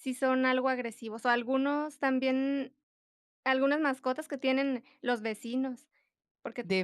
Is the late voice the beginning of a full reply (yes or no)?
no